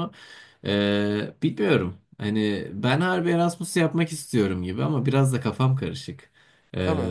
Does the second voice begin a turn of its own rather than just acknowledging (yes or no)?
no